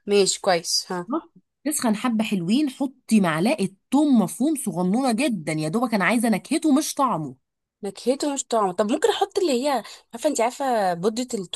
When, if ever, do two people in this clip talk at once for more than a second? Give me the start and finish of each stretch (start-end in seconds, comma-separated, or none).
none